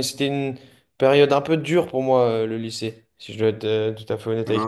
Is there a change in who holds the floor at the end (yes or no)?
yes